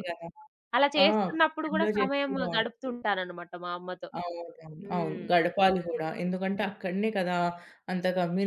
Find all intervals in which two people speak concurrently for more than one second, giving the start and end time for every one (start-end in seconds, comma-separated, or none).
1.1-2.9